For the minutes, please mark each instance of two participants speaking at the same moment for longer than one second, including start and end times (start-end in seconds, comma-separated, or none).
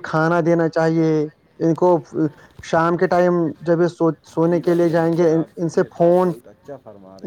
4.5-6.3